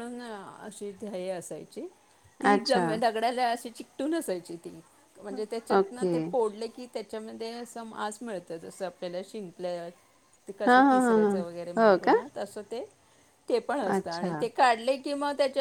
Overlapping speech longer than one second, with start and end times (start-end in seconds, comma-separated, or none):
none